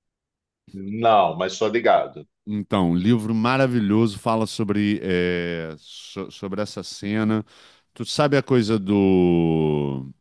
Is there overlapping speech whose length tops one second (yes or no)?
no